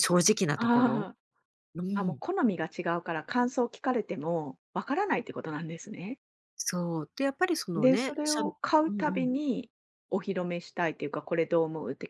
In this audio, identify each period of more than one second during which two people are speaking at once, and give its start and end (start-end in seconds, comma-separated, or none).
7.8-9.3